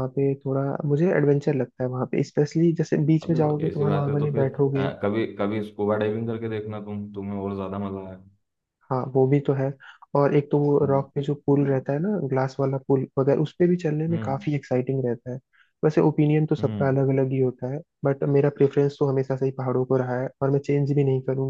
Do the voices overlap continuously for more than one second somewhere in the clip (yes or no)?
yes